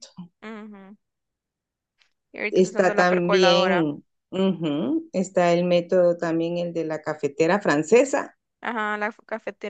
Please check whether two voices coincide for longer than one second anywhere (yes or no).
yes